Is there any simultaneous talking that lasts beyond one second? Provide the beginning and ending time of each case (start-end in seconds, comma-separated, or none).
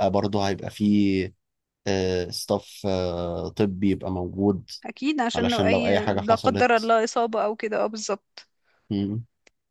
5.3-6.9